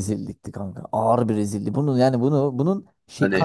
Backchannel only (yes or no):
yes